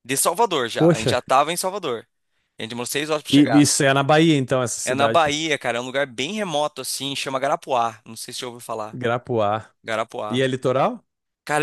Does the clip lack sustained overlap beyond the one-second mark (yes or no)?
yes